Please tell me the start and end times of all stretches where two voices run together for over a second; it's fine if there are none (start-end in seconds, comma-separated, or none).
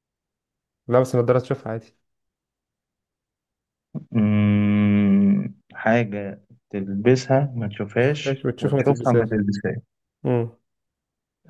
8.0-9.3